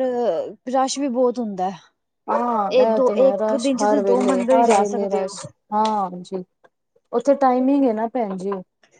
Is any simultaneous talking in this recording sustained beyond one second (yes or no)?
yes